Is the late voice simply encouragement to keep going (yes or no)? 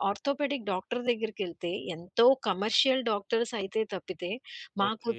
yes